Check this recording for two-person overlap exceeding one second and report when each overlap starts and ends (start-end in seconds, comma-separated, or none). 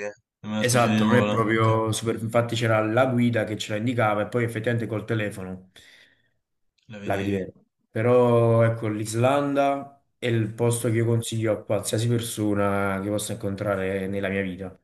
0.6-1.8